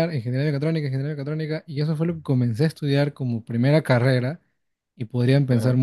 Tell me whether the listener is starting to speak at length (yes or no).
no